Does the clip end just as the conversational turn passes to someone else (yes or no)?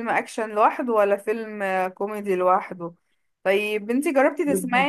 no